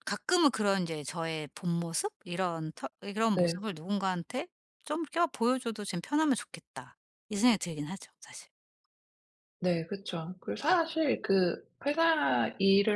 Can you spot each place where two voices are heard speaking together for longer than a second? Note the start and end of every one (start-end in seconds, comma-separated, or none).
none